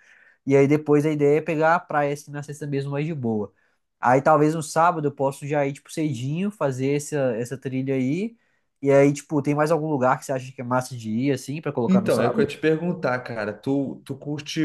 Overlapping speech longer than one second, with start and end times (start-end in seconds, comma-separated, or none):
none